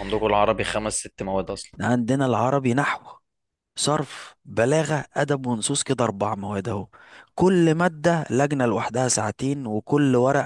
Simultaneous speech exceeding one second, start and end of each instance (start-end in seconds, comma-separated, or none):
none